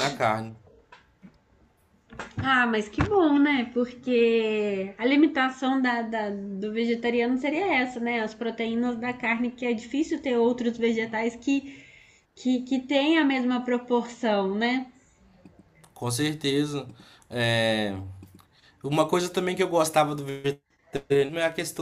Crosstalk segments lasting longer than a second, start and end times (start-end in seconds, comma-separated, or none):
none